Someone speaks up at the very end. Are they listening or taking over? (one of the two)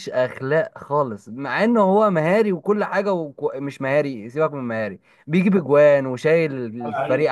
listening